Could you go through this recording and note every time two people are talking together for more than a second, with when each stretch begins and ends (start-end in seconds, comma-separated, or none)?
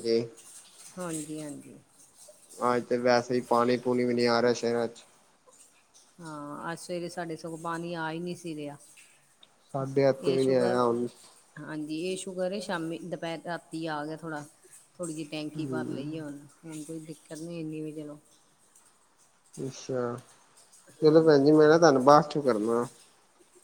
none